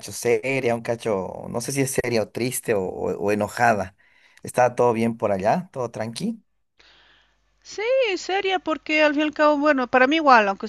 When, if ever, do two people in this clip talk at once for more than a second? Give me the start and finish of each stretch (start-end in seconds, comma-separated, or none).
none